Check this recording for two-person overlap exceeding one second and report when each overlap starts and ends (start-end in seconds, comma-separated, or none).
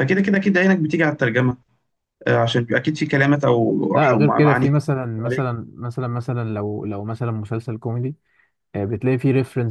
3.9-5.5